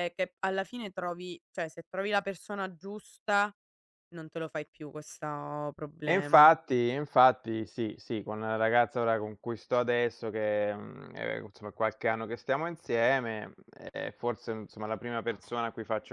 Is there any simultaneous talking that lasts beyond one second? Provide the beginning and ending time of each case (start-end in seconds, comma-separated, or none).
none